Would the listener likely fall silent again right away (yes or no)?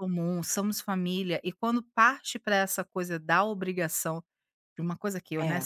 yes